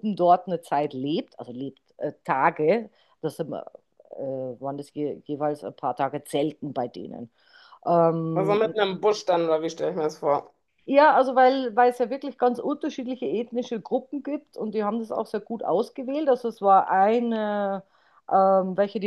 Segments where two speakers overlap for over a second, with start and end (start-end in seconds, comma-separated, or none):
none